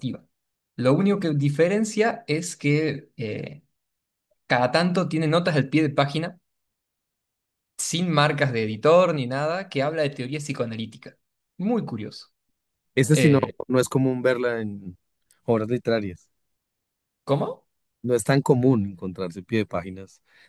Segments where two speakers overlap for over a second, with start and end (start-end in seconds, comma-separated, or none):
none